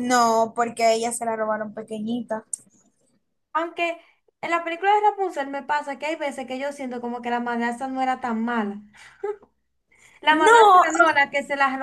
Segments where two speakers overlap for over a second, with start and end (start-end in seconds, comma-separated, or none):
none